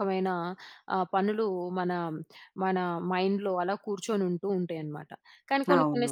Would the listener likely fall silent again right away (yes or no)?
yes